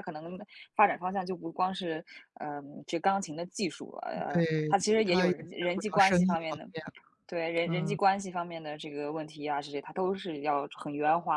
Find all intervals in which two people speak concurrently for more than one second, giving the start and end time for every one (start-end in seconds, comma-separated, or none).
4.3-6.7